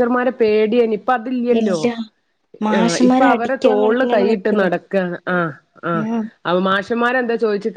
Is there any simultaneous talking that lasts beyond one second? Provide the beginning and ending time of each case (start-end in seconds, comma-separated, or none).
2.8-4.7